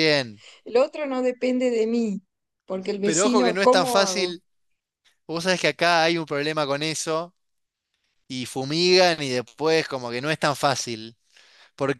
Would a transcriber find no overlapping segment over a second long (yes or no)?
no